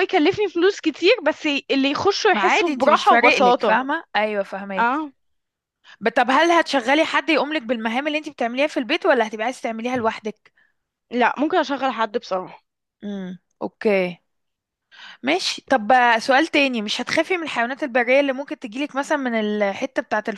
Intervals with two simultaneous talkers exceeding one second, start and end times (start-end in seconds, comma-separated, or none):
2.3-3.8